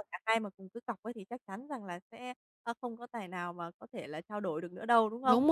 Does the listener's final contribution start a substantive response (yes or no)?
no